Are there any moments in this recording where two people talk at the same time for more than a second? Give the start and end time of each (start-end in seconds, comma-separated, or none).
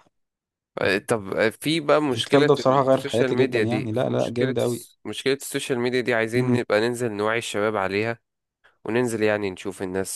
2.1-4.5